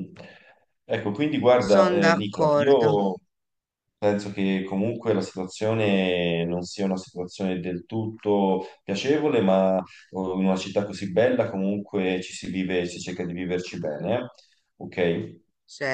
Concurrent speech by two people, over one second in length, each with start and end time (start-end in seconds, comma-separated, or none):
1.6-3.0